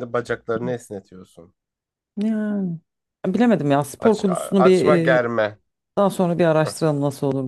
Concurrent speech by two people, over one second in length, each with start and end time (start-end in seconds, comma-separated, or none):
4.0-5.2